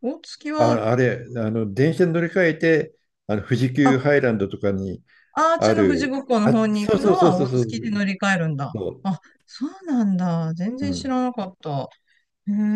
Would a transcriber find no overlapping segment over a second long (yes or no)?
no